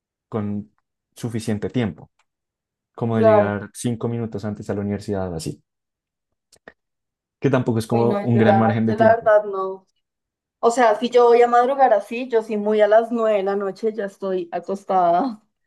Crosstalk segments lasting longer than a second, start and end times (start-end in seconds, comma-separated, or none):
7.9-9.3